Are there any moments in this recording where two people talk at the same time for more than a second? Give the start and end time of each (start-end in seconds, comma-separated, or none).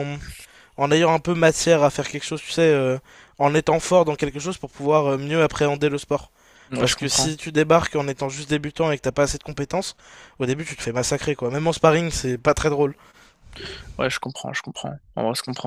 none